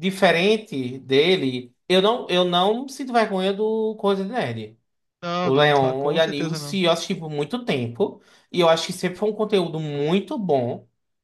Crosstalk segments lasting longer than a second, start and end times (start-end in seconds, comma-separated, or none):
5.4-6.8